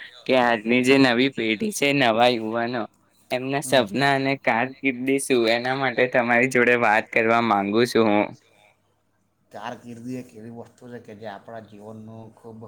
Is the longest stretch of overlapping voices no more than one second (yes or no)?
yes